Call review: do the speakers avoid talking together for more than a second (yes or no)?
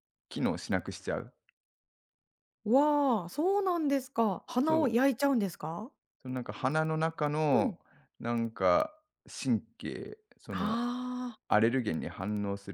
yes